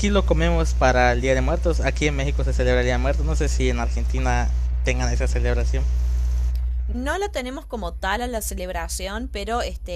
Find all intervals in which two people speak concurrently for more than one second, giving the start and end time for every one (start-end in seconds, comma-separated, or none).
none